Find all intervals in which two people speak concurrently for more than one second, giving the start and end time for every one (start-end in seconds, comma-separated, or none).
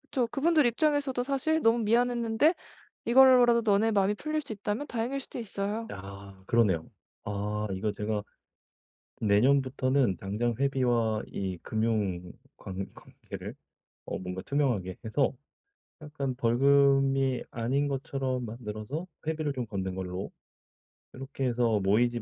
none